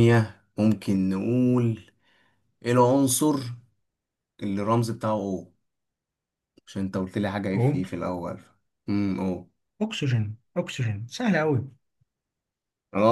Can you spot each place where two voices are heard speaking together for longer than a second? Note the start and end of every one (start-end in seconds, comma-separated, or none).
none